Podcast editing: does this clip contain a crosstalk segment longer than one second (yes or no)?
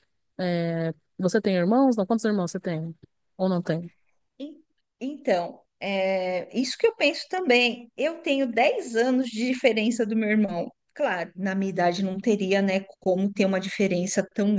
no